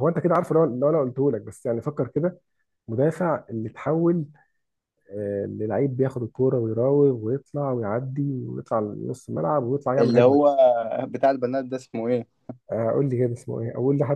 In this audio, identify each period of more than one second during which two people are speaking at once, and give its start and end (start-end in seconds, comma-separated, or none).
none